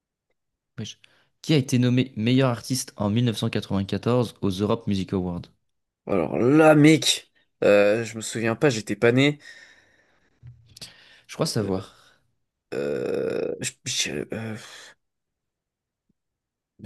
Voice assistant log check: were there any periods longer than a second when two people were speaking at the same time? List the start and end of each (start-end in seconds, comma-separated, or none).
none